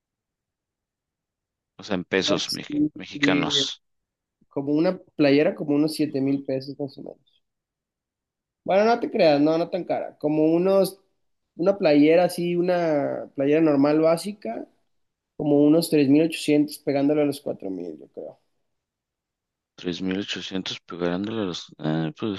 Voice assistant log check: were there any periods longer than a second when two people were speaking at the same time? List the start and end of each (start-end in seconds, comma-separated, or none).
2.2-3.7